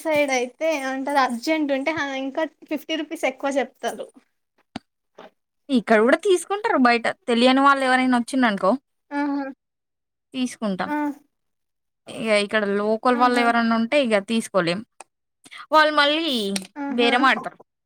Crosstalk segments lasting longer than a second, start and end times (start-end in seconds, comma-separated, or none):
none